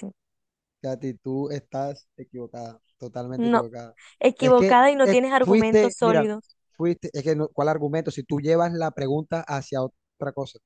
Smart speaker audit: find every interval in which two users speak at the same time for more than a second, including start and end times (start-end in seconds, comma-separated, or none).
4.4-6.3